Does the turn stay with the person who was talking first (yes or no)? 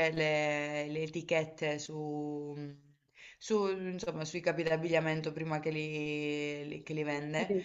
yes